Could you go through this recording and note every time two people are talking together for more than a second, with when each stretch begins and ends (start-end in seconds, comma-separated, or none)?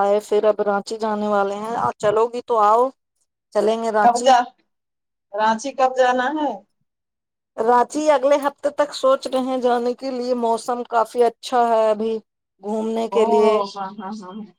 none